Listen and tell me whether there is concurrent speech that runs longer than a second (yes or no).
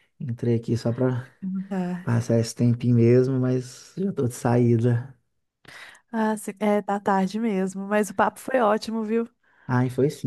no